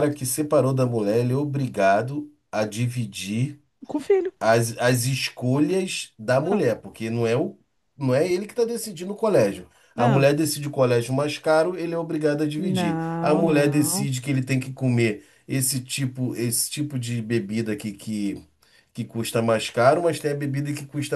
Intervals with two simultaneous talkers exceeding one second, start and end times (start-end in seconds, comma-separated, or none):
12.6-14.1